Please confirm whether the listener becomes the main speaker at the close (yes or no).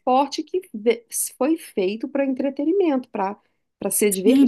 yes